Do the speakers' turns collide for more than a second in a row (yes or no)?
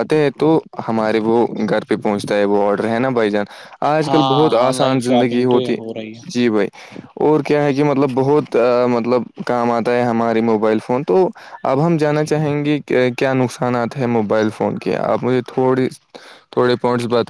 yes